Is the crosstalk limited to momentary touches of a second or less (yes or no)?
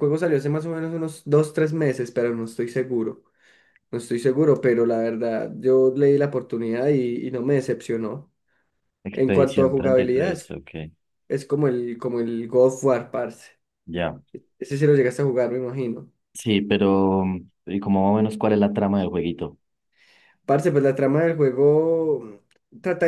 no